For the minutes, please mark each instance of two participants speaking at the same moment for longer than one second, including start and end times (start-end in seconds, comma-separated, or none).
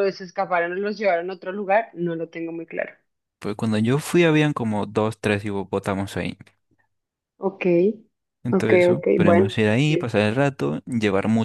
8.5-10.1